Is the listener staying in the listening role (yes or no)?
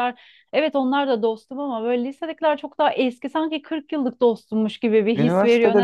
no